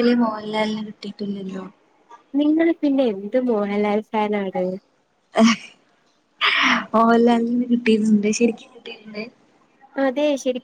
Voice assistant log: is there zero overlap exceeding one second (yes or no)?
yes